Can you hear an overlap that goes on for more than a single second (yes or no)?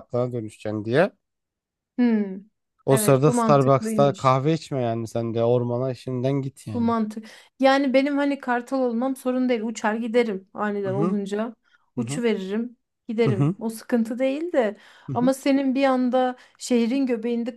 yes